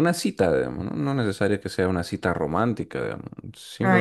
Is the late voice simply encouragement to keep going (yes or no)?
no